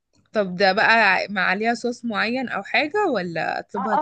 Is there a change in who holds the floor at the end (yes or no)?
yes